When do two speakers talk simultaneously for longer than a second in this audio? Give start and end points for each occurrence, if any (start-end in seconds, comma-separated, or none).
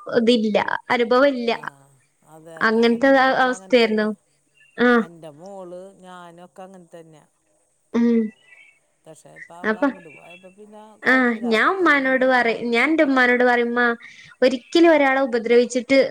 11.1-12.7